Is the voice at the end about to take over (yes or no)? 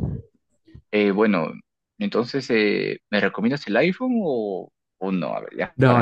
yes